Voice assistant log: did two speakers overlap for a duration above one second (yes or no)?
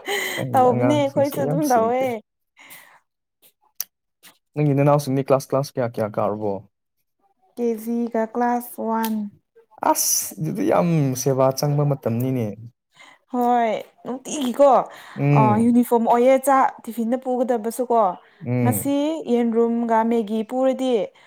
yes